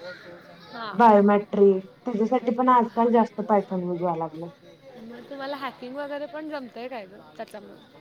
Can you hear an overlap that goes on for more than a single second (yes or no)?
yes